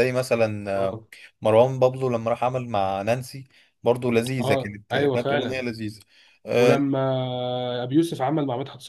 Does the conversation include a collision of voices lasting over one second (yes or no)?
yes